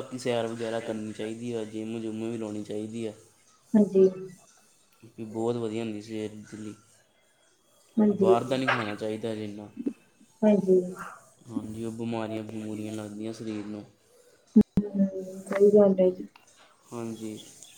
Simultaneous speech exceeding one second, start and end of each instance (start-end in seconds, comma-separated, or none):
none